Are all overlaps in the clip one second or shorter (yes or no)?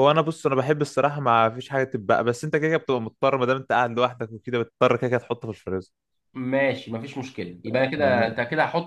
yes